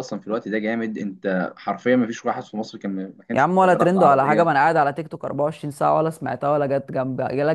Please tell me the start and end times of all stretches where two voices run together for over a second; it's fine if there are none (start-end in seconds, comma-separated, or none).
3.3-4.5